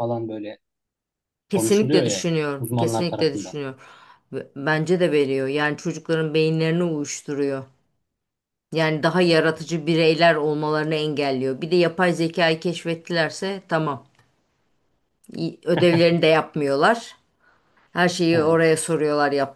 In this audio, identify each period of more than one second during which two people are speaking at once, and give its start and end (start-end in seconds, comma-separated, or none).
1.5-3.6